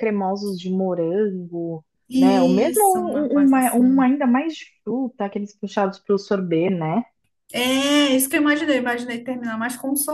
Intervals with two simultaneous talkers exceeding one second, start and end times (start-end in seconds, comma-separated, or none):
2.1-4.1